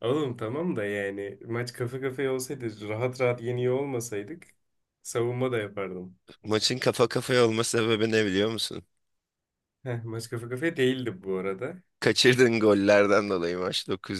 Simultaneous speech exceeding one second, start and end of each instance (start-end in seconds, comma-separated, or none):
none